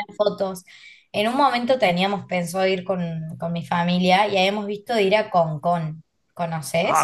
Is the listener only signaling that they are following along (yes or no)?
no